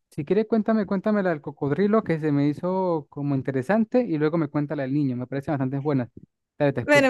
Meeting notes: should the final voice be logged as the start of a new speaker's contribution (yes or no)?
yes